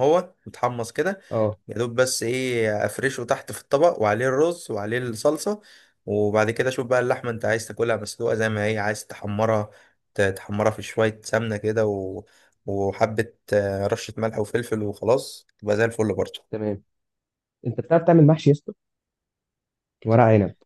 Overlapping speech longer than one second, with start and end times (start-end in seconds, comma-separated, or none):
none